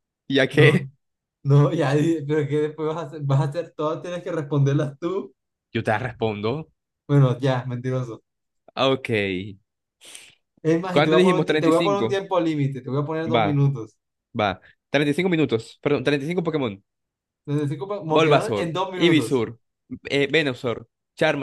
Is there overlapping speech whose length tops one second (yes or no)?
yes